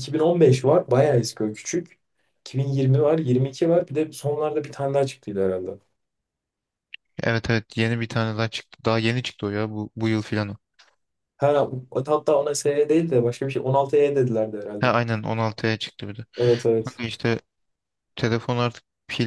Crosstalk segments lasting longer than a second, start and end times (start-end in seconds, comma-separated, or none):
none